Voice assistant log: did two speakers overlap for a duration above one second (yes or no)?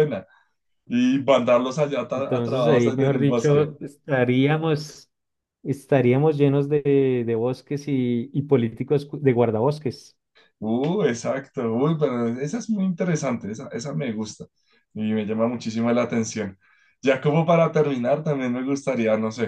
yes